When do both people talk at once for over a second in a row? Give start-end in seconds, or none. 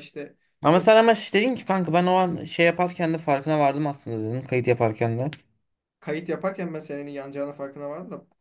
none